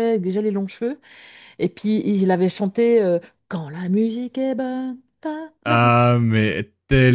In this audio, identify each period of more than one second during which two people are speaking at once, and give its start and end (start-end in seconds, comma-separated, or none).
none